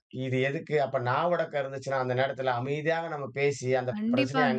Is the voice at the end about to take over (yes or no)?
no